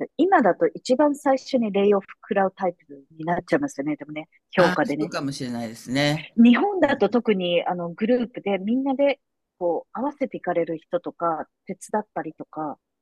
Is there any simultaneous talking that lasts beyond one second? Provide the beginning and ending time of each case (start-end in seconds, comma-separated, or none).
none